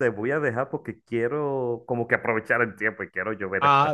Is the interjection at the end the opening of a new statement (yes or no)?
yes